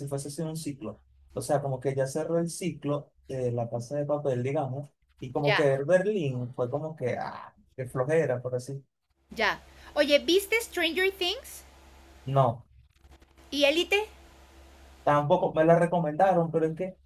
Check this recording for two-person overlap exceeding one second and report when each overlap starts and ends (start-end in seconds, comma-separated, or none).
none